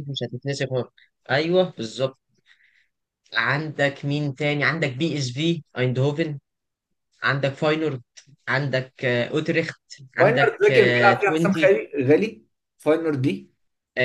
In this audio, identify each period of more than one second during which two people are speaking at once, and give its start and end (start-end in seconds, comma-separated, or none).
10.2-11.7